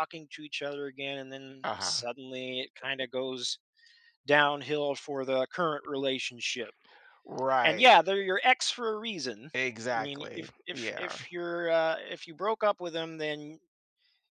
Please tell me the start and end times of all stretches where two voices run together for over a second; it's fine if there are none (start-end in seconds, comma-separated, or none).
9.5-11.2